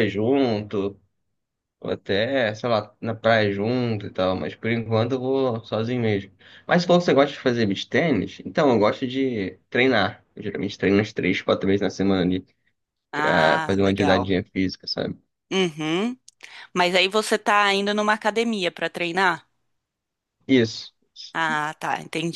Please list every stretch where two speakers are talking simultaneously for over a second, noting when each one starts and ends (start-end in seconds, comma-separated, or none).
13.1-14.3